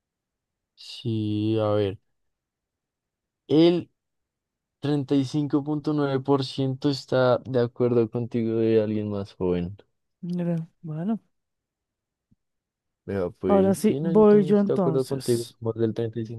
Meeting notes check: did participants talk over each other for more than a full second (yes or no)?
yes